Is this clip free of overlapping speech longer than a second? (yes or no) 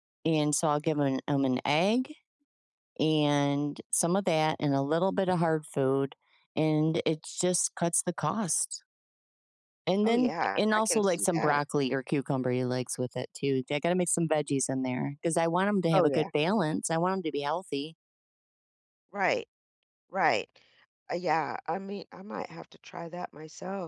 no